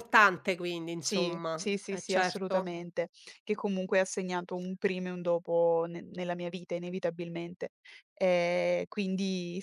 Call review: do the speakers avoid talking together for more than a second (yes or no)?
no